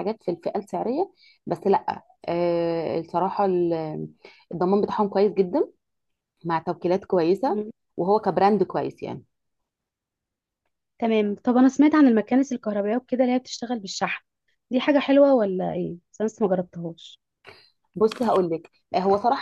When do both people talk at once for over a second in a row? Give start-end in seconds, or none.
none